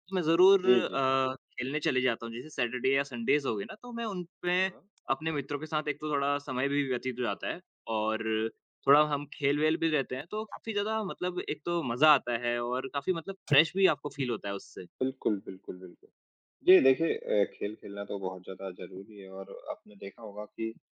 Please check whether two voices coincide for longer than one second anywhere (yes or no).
no